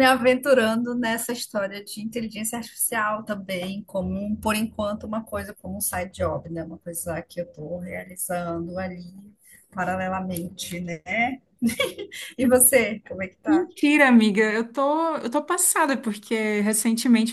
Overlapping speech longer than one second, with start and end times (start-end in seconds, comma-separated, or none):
none